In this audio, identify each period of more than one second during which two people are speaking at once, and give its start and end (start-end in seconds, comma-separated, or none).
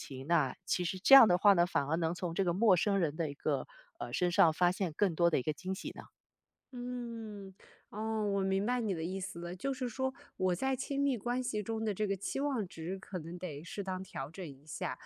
none